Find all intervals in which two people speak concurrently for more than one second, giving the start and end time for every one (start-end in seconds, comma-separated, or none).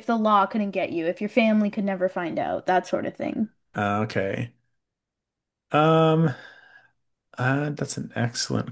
none